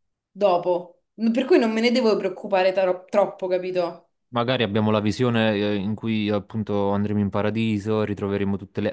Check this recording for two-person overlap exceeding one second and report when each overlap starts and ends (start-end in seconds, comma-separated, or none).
none